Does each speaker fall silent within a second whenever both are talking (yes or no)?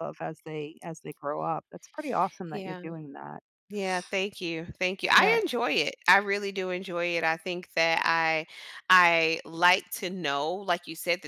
yes